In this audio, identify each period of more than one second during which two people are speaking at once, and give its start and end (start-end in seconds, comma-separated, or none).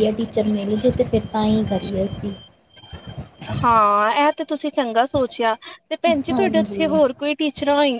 none